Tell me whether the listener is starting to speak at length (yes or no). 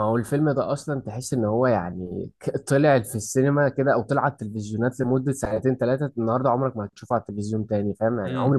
no